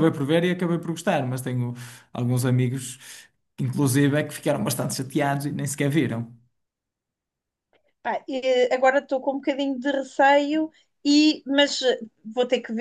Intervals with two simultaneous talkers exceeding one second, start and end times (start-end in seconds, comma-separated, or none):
none